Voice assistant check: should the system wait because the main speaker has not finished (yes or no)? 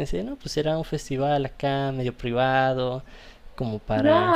no